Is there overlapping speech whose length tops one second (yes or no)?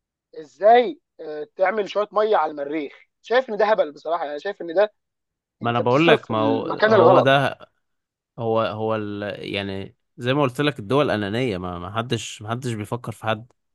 yes